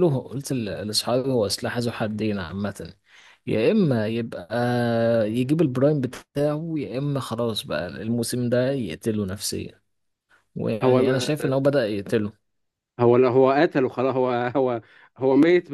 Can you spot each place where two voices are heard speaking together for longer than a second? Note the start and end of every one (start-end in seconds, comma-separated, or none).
none